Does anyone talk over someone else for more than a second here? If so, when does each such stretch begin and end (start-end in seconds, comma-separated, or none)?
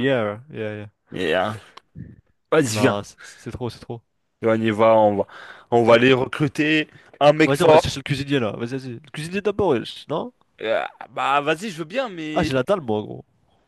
none